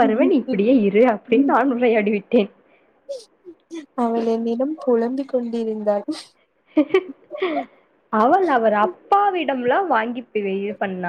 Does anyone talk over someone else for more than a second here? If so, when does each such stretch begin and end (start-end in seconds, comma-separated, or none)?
none